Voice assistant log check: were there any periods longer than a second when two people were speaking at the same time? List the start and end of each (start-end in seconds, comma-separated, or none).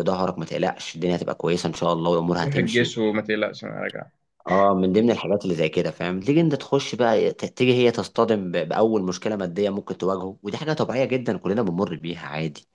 none